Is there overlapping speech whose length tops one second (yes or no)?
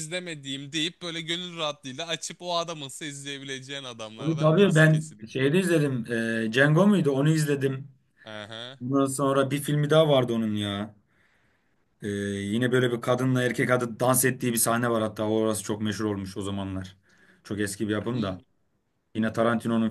yes